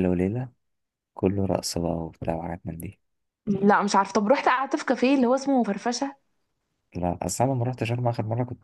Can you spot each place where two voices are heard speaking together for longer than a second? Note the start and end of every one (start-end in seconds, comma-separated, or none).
none